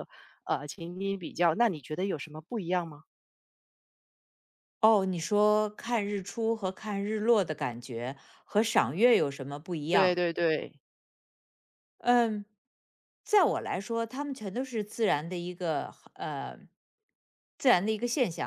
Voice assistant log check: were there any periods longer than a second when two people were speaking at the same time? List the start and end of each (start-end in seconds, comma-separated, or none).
none